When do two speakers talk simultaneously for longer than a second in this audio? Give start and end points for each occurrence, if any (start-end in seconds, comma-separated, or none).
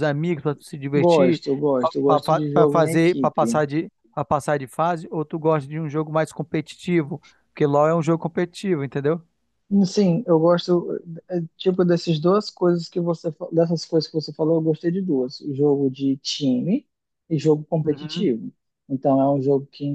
2.1-3.6